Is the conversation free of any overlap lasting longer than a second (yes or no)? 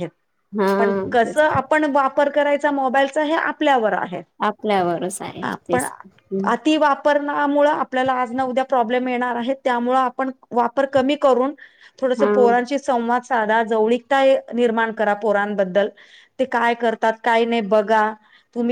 yes